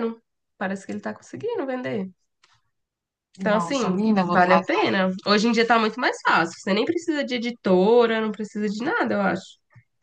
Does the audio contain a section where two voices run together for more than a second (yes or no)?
yes